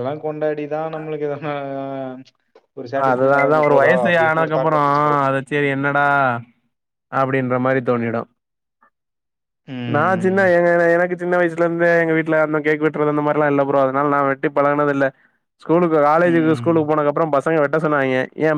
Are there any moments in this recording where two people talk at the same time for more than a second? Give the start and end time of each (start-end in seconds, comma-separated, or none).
3.1-4.8